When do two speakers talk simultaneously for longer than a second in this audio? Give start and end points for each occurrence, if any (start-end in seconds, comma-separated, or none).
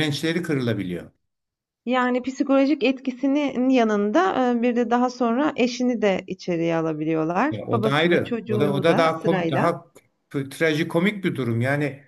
7.5-9.8